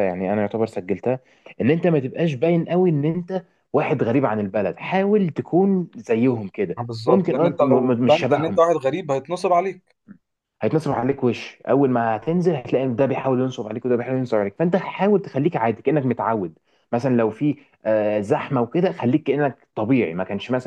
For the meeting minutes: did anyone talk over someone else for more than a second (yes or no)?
yes